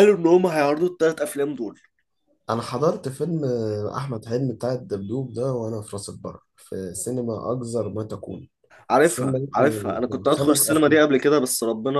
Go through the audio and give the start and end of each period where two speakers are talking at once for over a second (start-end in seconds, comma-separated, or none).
9.0-11.0